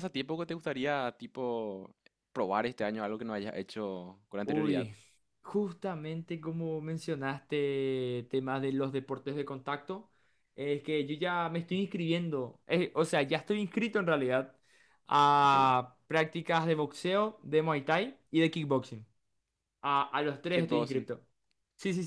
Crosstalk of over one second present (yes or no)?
no